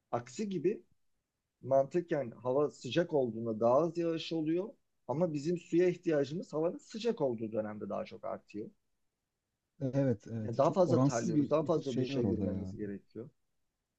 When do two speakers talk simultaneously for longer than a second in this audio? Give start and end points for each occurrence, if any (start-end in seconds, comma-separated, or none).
10.4-12.7